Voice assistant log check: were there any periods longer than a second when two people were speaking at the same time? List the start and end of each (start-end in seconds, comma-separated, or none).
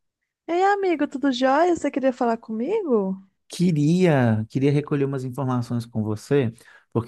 none